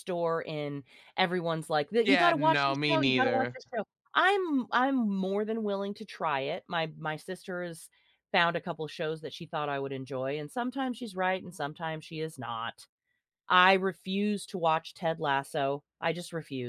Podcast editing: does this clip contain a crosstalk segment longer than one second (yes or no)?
yes